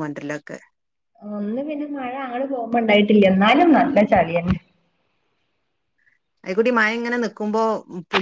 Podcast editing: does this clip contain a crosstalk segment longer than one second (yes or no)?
no